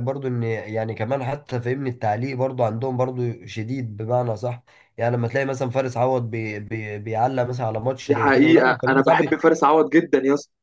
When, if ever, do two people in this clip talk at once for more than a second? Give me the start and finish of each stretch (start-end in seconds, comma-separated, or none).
8.1-9.5